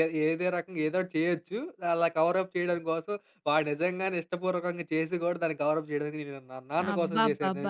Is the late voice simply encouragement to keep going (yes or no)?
no